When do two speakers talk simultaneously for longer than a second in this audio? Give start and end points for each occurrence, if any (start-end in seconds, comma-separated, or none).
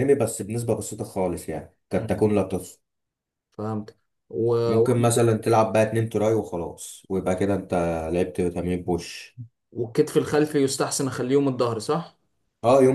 none